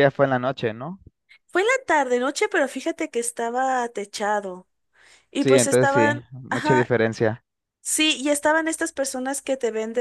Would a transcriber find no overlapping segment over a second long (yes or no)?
no